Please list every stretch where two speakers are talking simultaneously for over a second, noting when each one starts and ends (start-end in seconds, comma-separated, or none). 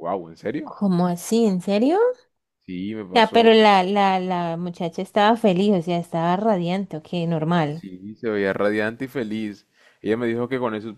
none